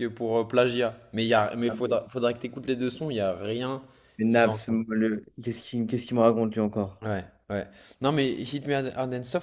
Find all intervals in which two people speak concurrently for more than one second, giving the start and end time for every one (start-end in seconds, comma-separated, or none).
none